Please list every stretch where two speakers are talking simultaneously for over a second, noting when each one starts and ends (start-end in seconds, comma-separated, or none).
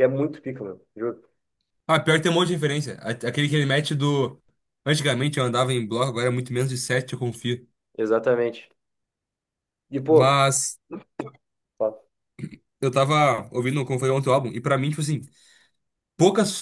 none